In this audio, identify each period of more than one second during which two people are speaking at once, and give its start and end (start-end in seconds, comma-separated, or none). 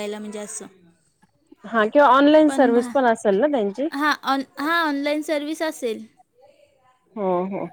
none